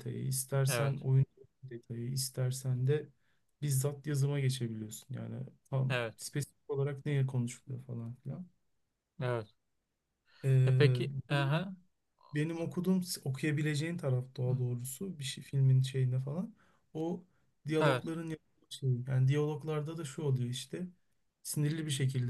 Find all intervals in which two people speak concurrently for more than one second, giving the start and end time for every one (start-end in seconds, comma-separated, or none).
none